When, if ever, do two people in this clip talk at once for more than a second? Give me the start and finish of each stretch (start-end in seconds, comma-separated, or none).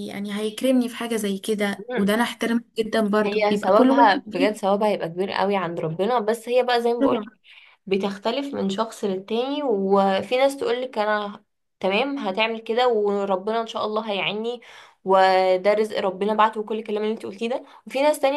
3.2-4.5